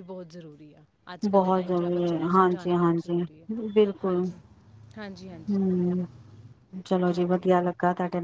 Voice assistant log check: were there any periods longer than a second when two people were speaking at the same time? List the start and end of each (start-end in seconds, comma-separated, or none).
1.3-3.2